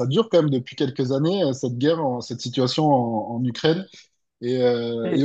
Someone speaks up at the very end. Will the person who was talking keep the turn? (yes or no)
no